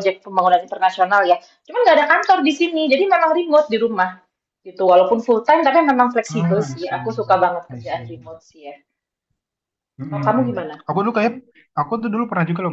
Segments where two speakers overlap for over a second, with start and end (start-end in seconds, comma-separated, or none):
6.3-8.1